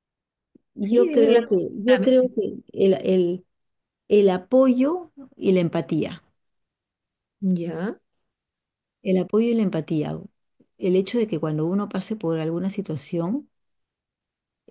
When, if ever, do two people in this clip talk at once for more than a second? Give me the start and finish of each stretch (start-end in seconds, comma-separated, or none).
0.8-2.3